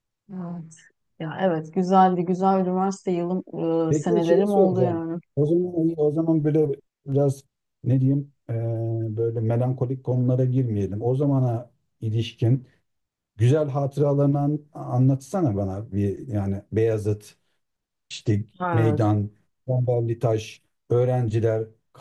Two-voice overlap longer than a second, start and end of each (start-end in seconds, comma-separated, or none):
3.9-5.2